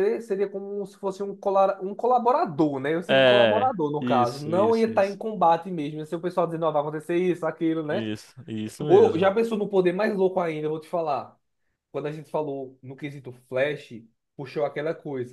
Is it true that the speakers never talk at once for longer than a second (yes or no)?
no